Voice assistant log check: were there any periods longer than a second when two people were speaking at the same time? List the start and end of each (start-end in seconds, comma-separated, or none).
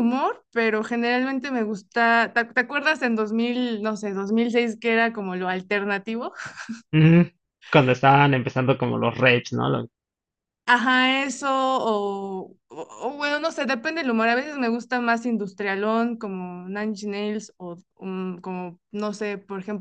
none